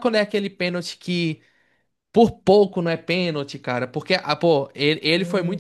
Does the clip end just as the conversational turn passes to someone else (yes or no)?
no